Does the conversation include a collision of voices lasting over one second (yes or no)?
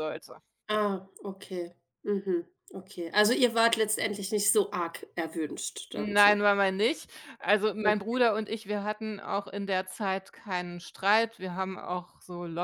no